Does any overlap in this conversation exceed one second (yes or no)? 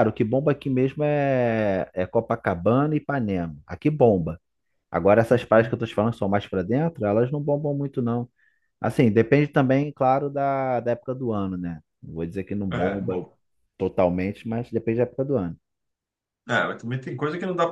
no